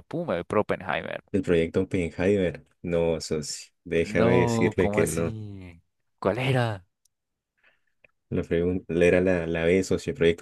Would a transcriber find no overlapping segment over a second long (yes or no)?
no